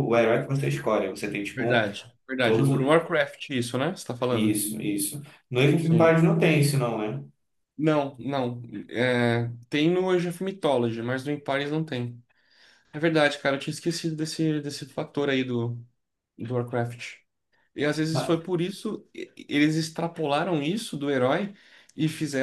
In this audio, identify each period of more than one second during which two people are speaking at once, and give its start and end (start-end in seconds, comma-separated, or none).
none